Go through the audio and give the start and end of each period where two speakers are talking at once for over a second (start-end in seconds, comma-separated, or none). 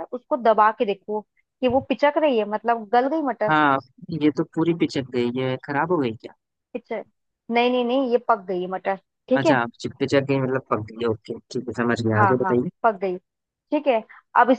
none